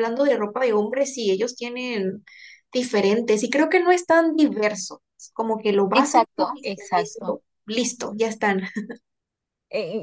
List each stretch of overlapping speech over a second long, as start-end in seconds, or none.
5.9-7.4